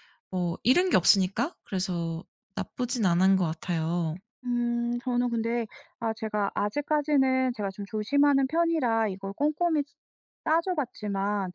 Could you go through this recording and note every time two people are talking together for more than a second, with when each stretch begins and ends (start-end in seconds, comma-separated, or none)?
none